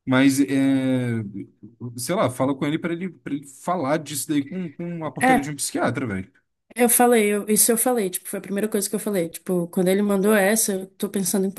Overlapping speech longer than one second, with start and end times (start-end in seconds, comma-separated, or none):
none